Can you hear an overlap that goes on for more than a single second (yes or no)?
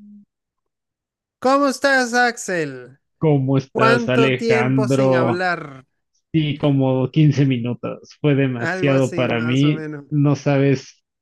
yes